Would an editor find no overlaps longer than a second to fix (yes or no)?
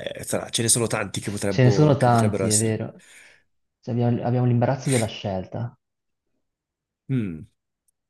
no